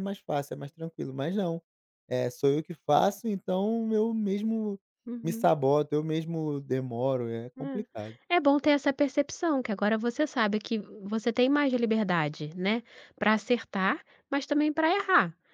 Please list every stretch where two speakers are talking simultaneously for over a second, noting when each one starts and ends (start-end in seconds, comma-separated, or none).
none